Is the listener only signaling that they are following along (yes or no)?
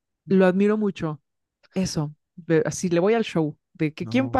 yes